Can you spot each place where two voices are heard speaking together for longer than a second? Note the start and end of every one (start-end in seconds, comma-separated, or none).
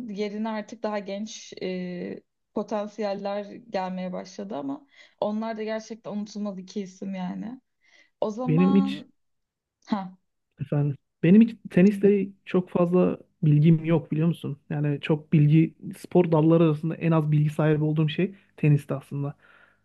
none